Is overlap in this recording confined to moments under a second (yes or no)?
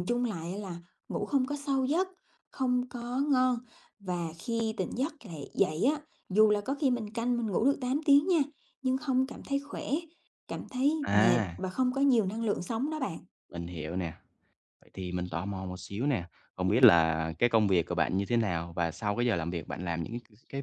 yes